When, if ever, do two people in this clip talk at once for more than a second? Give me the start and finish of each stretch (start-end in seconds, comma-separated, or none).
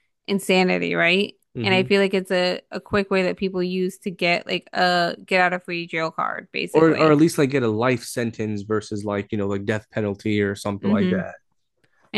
none